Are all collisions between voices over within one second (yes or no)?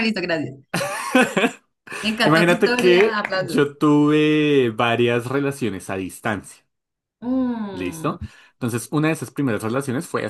no